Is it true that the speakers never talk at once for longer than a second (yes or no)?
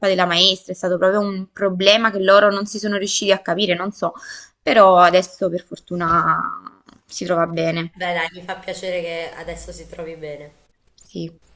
yes